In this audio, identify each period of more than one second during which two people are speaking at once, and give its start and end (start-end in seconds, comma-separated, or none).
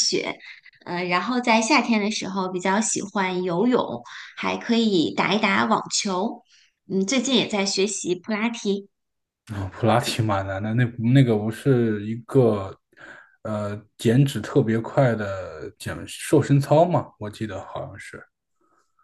none